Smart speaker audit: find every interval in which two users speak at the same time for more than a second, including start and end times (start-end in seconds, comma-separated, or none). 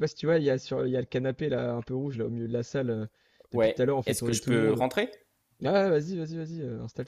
3.5-4.8